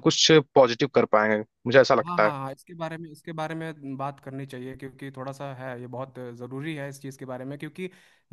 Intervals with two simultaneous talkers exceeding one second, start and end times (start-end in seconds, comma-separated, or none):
none